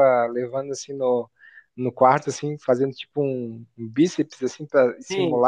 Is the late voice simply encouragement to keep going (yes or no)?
yes